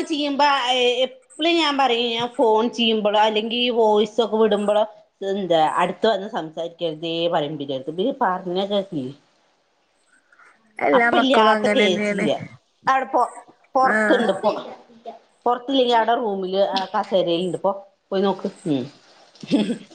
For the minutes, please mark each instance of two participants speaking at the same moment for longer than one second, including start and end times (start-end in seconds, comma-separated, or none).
11.0-12.3